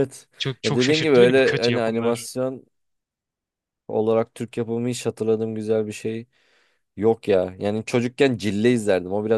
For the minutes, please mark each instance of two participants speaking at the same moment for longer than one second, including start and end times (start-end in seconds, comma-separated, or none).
0.6-2.3